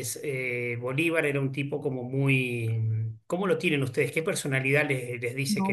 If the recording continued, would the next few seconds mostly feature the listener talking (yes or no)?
yes